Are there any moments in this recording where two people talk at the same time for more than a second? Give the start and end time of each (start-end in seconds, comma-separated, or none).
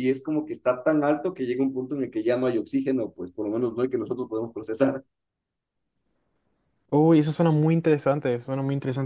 none